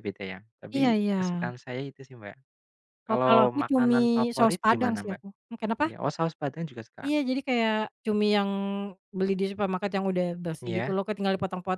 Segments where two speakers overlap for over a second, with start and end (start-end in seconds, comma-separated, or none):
3.1-5.2